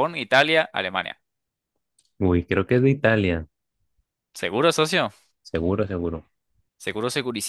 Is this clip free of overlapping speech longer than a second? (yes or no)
yes